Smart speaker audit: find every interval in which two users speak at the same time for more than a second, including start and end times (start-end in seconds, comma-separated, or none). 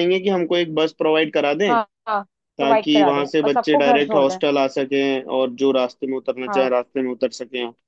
2.6-4.4